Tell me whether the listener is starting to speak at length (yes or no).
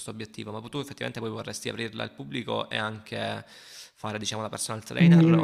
yes